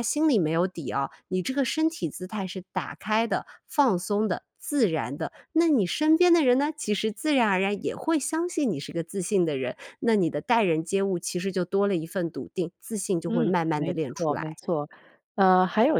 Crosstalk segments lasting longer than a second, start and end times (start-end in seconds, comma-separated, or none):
13.3-14.6